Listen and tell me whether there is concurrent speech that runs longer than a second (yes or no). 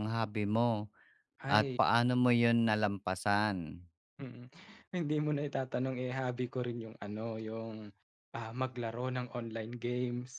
no